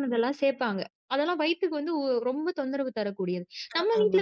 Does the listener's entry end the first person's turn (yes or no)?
no